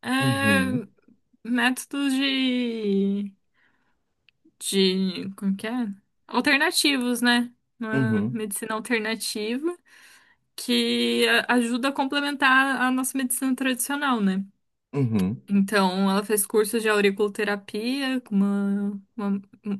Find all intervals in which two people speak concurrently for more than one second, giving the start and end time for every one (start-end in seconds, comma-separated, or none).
none